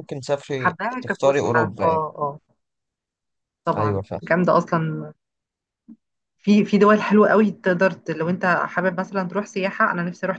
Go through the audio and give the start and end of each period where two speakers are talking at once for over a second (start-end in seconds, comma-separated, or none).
0.6-2.0